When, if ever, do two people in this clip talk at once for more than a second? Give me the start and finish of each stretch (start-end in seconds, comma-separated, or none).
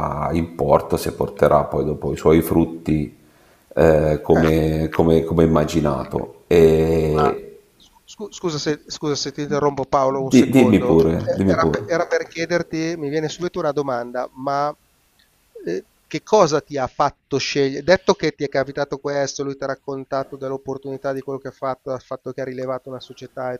10.2-11.9